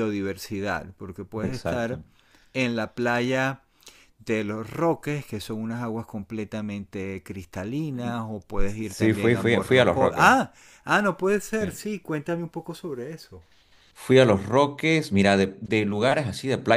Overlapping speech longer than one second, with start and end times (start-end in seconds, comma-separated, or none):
8.9-10.3